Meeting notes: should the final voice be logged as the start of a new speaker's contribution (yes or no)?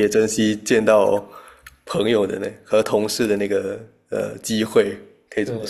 yes